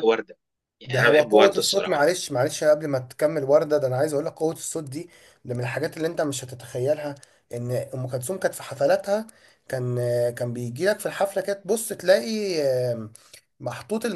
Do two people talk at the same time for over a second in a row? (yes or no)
yes